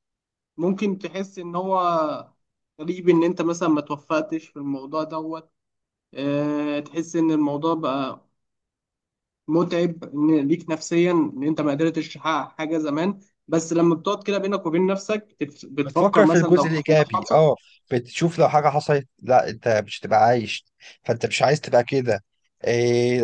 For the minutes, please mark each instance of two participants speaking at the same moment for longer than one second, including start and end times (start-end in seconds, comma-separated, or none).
15.8-17.5